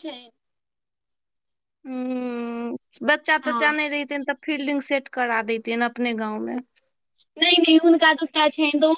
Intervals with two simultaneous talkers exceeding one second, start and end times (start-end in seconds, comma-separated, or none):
none